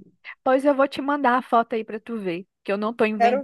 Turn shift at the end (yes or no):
no